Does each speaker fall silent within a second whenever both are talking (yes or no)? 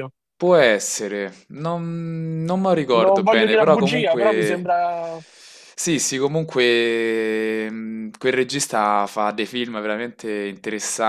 no